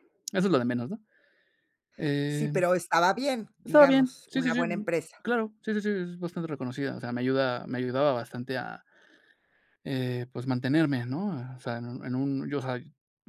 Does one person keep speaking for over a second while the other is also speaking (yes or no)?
yes